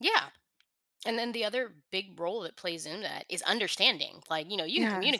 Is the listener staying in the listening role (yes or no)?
yes